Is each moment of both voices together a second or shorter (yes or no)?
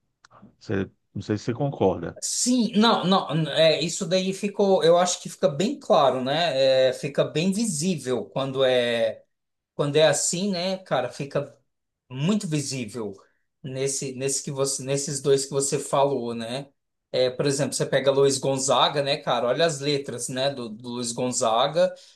yes